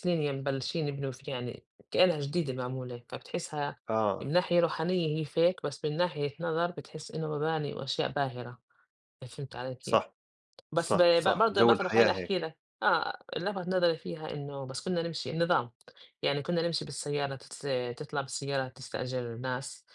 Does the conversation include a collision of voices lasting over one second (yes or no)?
yes